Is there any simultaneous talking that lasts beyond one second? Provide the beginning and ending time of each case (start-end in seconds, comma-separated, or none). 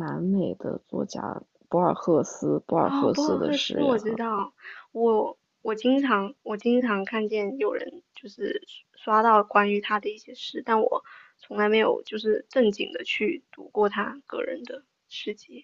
2.8-4.5